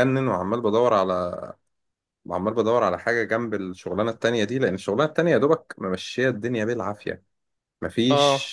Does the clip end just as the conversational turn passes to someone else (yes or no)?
no